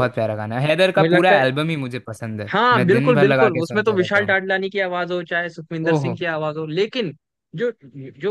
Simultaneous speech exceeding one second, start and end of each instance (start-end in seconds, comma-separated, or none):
2.5-4.4